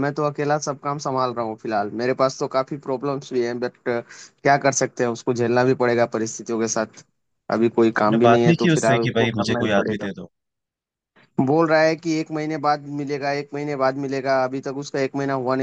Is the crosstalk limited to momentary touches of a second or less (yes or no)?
no